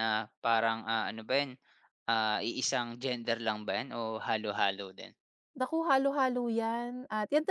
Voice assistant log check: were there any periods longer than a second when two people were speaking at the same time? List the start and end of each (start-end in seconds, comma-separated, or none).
none